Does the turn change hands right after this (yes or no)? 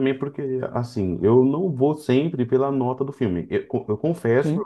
no